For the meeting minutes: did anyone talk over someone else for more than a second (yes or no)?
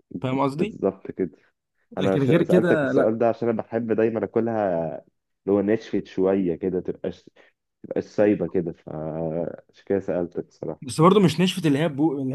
yes